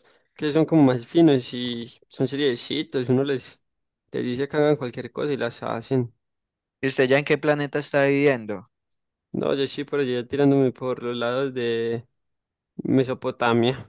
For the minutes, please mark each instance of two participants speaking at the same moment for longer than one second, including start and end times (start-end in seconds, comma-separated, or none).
none